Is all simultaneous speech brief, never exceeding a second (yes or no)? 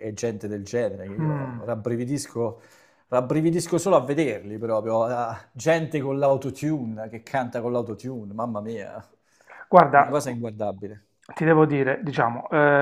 yes